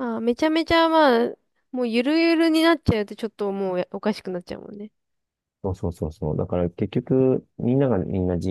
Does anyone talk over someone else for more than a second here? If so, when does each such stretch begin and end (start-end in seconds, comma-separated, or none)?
none